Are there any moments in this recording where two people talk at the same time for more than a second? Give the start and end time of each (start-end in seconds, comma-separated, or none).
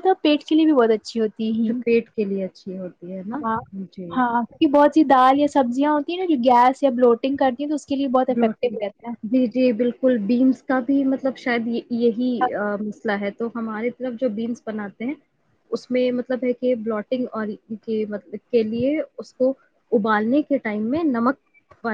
none